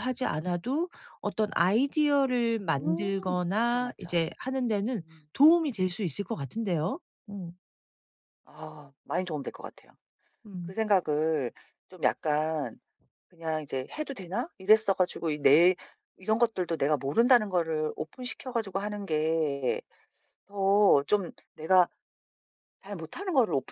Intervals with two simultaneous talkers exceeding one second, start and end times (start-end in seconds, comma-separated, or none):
2.8-4.2